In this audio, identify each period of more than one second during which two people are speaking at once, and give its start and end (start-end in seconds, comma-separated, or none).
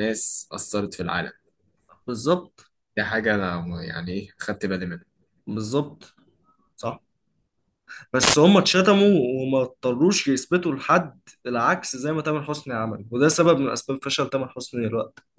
none